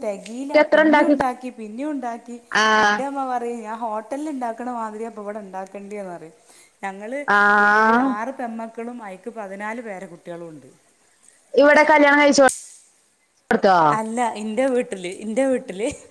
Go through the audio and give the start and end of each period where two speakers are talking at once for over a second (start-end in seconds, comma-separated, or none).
none